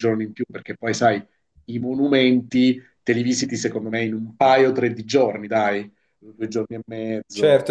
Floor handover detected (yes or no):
yes